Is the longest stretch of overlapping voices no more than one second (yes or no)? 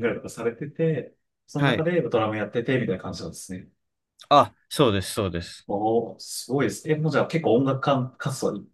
yes